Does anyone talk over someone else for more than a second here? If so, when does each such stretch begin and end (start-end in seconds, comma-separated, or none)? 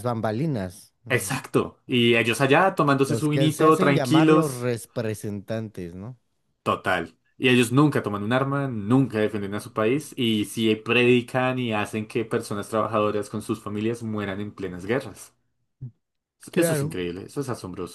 3.0-4.7